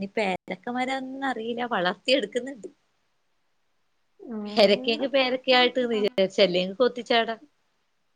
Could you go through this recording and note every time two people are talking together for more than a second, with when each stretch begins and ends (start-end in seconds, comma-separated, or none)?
4.5-6.1